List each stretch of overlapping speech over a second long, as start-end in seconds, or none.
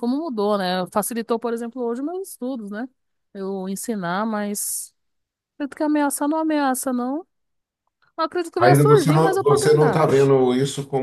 8.6-10.3